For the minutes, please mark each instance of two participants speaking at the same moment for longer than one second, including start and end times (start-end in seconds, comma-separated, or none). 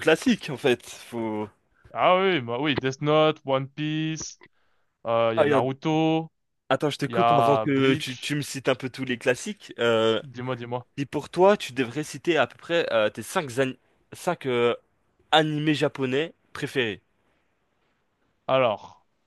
7.1-8.3